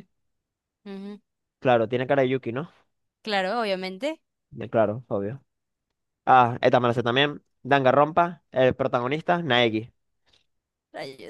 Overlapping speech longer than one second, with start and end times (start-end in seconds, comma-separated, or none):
none